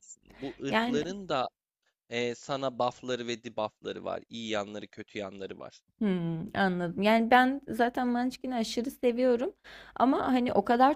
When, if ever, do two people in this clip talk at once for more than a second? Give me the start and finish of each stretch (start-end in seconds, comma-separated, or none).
none